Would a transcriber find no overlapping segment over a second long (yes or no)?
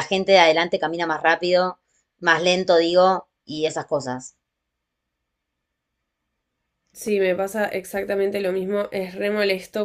yes